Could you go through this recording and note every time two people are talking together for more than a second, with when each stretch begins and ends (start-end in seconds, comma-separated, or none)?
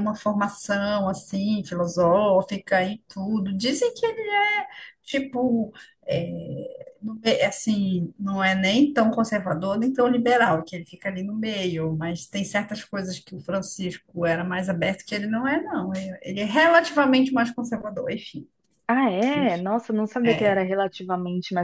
none